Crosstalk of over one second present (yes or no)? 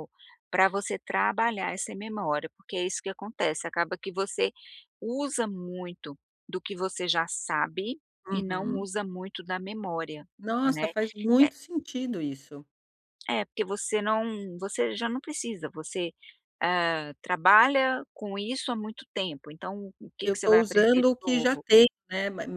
yes